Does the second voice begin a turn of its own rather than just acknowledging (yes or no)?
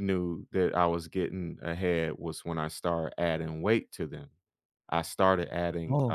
no